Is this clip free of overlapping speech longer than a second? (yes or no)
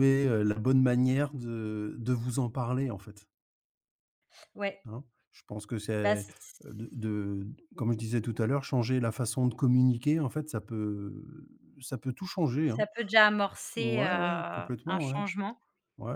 no